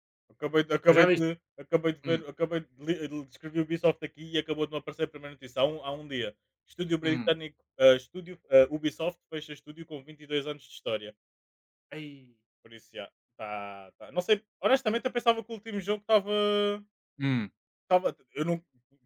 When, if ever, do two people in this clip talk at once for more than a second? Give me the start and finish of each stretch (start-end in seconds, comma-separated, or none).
none